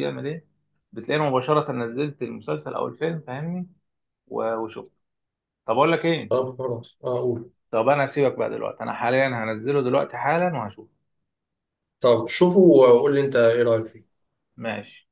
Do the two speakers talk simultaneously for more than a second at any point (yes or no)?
no